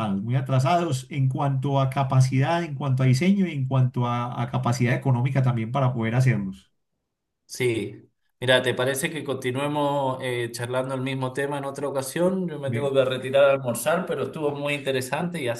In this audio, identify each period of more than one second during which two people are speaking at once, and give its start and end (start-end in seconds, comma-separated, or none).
none